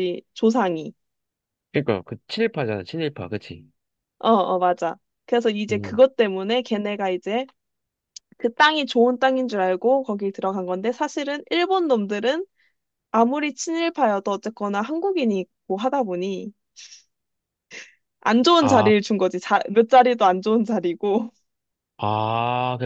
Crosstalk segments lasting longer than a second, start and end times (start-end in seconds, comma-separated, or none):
none